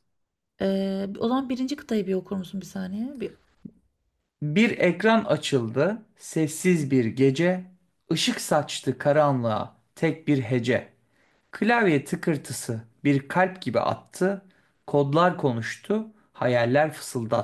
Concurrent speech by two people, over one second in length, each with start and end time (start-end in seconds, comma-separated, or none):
none